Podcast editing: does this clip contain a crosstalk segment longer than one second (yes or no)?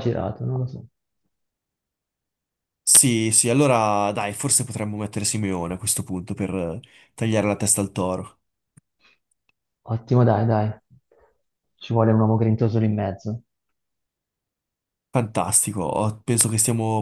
no